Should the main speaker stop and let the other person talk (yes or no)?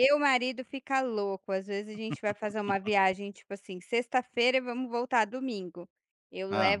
no